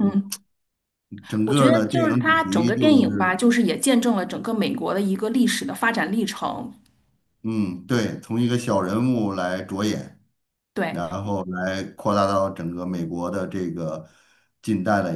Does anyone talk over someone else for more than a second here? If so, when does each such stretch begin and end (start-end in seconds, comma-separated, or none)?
1.4-3.4